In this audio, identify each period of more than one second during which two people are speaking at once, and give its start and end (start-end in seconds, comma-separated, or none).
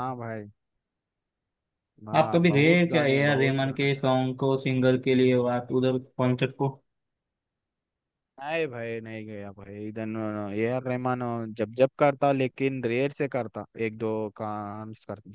2.2-4.0